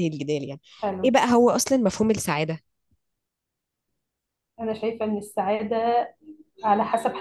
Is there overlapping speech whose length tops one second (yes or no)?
no